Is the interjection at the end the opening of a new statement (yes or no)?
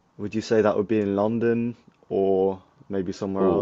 yes